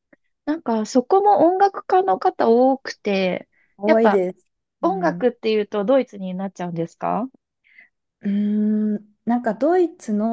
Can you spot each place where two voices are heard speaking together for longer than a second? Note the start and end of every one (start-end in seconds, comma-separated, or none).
none